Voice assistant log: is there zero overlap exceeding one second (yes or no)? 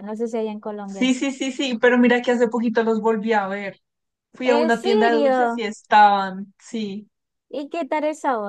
no